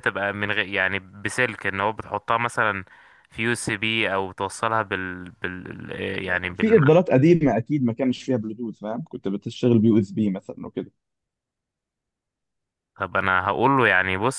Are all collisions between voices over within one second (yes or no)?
yes